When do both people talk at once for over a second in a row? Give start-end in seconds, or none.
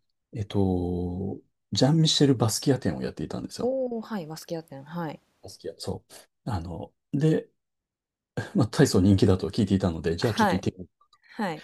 none